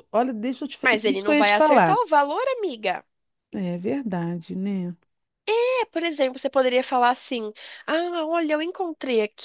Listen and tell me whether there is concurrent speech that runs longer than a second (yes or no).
yes